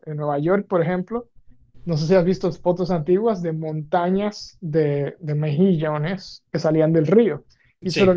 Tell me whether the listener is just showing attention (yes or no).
yes